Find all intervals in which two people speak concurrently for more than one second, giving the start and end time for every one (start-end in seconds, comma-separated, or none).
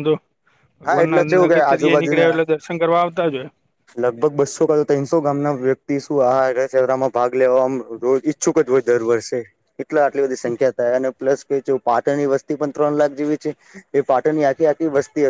0.9-2.4